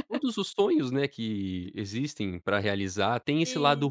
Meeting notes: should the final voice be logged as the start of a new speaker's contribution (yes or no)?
no